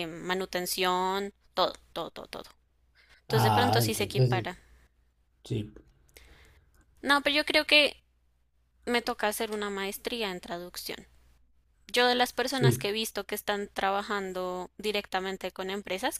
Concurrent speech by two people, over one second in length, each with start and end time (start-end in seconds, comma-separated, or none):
3.3-4.5